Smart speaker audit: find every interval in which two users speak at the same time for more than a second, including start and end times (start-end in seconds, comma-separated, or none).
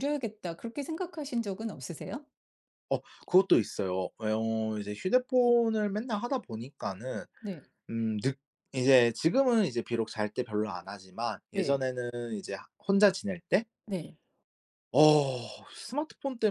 none